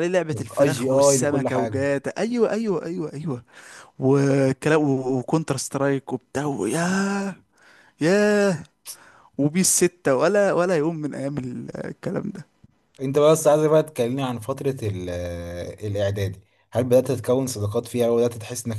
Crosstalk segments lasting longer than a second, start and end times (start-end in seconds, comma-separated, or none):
0.7-1.9